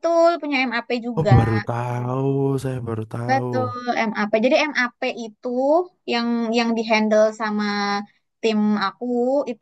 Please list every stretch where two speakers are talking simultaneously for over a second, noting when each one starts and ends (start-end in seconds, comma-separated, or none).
none